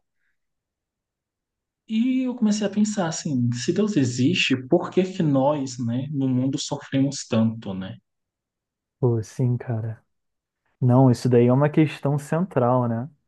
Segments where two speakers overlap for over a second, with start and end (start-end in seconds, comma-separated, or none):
none